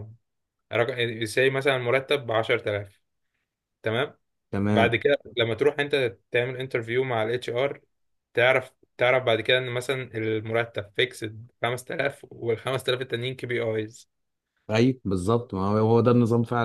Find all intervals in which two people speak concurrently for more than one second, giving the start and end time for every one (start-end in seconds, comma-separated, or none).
none